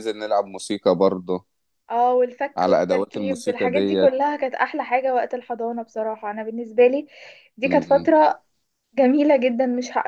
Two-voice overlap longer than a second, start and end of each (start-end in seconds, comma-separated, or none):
2.6-4.1